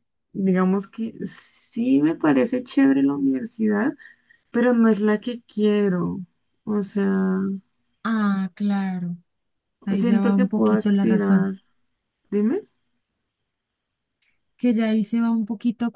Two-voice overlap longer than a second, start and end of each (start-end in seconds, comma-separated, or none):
9.9-11.5